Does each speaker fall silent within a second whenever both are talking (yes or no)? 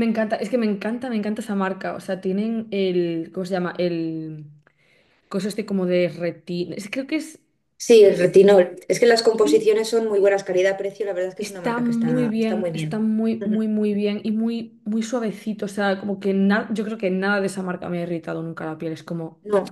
no